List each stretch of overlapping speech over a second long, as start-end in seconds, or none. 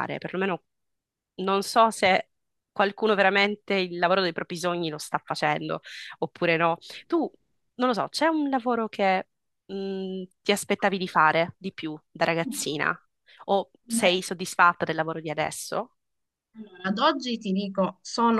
none